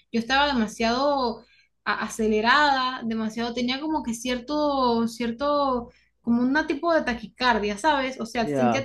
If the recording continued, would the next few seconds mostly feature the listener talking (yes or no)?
no